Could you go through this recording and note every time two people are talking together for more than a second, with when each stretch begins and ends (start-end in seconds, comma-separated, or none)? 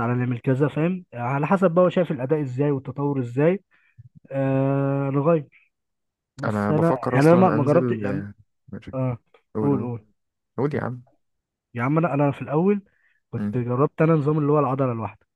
6.4-8.3